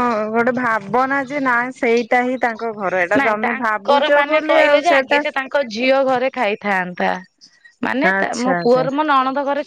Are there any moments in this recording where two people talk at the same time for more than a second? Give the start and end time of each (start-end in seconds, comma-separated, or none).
3.2-5.2